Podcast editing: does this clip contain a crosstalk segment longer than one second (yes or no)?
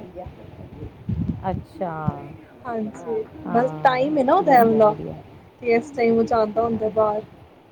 yes